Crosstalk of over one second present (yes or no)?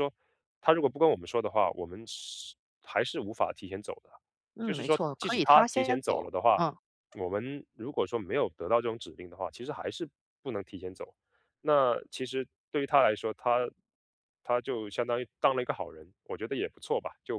yes